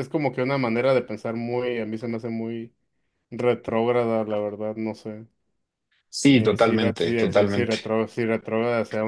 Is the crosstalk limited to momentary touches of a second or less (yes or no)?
no